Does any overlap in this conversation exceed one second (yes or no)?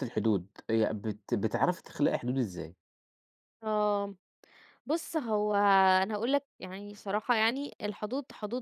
no